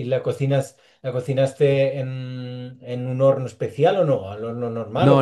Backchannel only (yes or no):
no